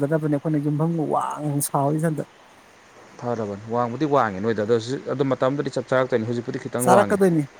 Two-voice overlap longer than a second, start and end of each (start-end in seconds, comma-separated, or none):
none